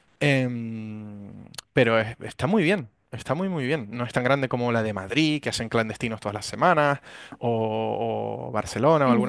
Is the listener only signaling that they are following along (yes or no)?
yes